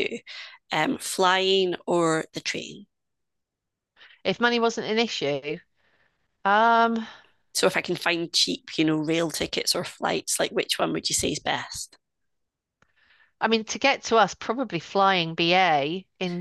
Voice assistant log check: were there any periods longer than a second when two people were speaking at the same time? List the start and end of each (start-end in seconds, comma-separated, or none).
none